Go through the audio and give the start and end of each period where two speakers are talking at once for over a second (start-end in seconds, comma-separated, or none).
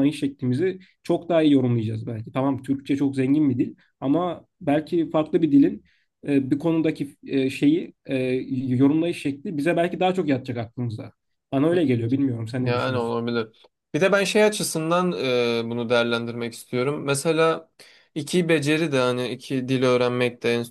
none